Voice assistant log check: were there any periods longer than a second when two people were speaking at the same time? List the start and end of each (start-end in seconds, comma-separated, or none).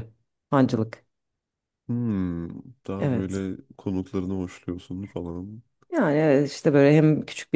none